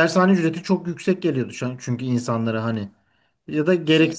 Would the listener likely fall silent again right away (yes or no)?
yes